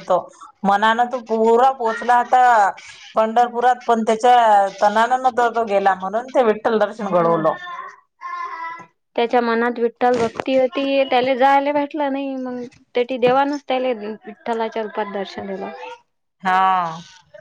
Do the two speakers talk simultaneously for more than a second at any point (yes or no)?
no